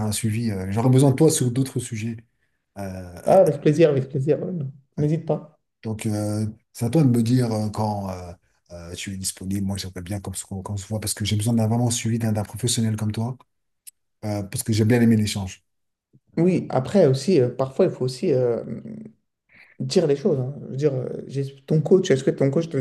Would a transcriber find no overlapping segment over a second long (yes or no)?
yes